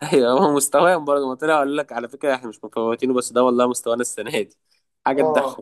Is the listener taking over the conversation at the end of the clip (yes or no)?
yes